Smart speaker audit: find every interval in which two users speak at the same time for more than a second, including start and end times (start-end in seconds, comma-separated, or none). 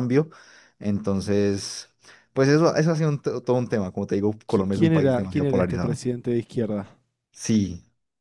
4.5-6.0